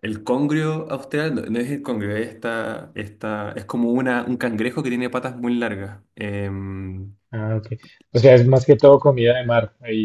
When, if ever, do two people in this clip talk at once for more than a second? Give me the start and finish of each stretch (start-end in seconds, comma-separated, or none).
none